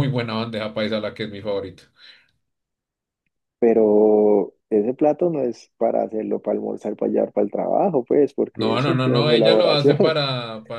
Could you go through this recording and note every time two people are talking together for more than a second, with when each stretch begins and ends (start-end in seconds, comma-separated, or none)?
8.5-10.2